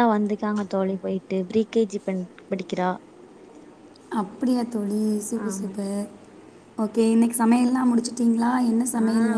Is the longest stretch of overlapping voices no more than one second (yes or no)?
yes